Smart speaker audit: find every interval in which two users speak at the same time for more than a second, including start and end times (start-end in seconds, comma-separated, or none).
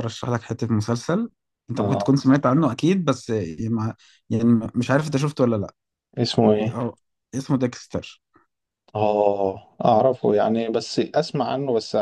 none